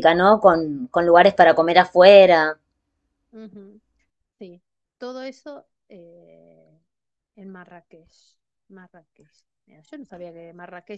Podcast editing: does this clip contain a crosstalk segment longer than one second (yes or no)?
no